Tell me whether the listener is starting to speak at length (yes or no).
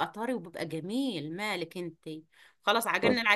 no